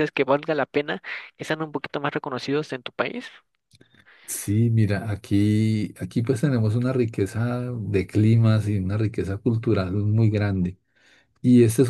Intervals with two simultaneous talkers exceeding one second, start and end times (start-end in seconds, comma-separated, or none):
none